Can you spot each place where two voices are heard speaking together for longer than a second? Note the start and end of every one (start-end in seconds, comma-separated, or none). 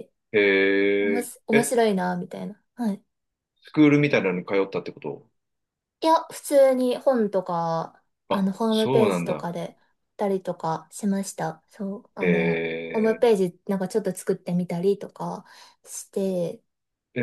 8.3-9.5